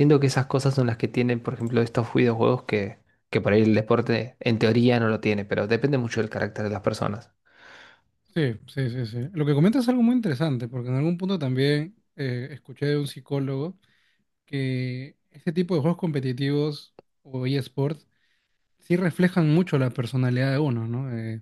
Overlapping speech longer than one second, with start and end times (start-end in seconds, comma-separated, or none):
none